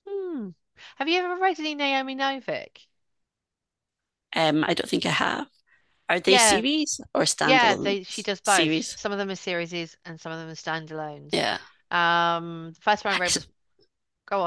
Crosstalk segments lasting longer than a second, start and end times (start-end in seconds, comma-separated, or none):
7.4-9.0